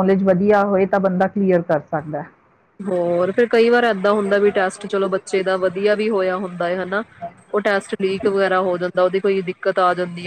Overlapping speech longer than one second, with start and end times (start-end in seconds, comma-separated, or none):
none